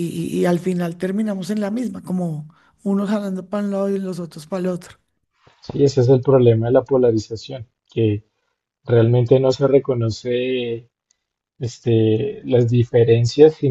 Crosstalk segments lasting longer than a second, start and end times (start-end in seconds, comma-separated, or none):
none